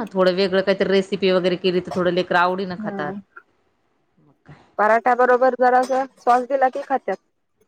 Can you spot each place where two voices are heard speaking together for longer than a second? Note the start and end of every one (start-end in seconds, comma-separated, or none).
none